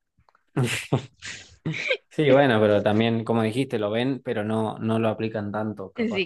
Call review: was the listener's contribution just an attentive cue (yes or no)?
no